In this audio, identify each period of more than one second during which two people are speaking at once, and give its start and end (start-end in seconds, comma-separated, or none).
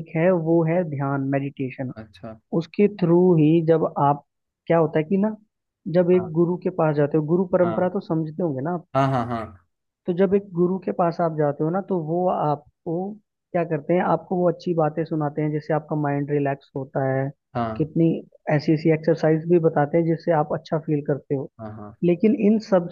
none